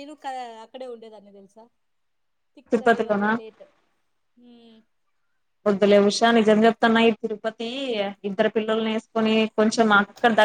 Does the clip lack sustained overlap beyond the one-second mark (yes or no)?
yes